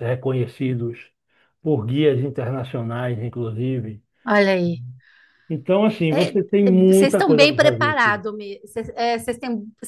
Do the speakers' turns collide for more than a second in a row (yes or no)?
yes